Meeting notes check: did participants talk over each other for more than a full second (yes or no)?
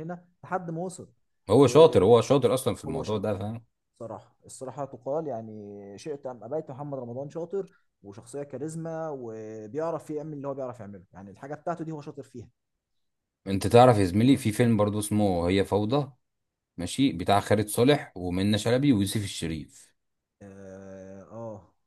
no